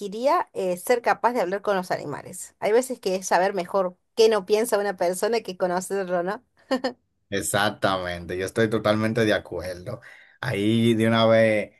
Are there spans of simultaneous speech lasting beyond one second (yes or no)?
no